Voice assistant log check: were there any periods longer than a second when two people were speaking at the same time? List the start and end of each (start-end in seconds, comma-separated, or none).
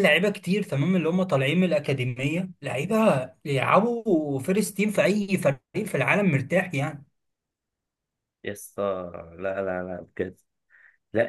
none